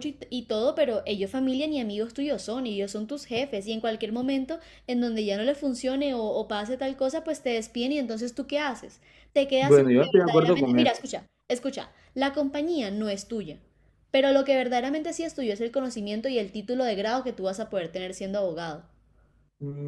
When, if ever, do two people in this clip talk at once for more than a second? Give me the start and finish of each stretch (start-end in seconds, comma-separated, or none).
9.6-10.9